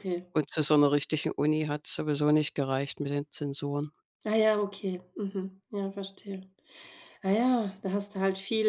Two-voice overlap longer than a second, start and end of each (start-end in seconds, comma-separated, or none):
none